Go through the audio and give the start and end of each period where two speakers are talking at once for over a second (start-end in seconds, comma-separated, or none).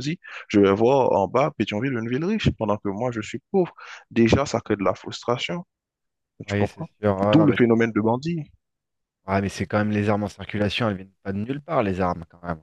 6.5-7.9